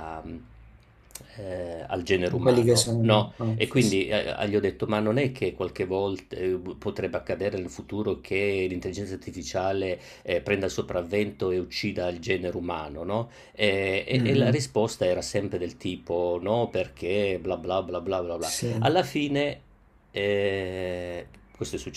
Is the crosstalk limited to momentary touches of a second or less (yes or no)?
no